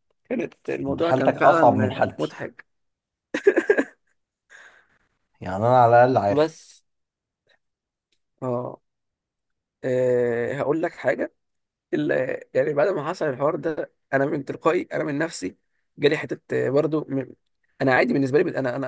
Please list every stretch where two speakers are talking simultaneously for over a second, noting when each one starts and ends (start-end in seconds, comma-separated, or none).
0.9-2.4